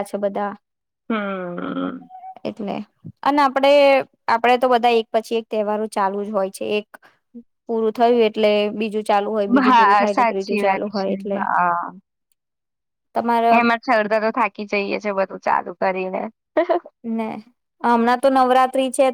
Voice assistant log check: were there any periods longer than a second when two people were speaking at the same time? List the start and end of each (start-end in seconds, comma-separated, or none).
9.7-11.4